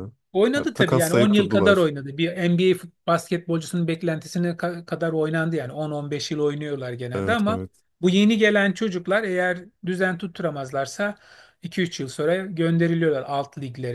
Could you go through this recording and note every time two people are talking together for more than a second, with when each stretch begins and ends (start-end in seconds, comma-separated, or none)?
0.5-1.9